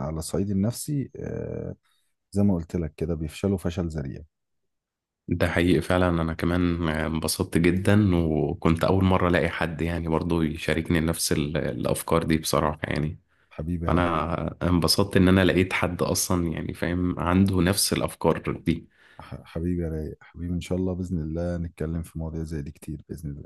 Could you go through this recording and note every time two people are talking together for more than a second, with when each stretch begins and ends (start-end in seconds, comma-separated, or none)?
none